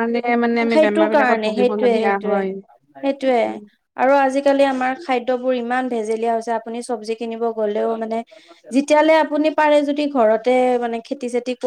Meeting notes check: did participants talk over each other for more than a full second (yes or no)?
yes